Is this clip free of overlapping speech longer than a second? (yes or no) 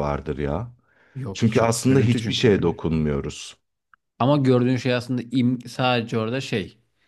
no